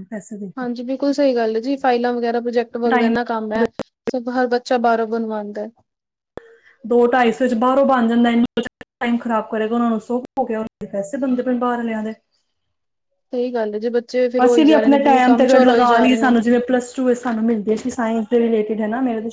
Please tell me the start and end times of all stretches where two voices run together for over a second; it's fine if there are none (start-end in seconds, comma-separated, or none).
14.4-16.4